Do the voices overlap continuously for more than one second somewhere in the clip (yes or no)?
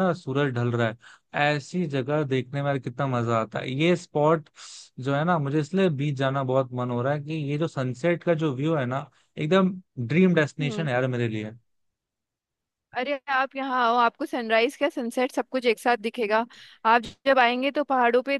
no